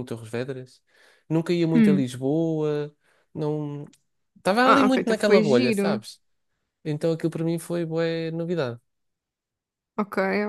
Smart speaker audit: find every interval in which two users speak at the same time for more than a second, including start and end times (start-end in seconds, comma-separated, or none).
4.6-6.0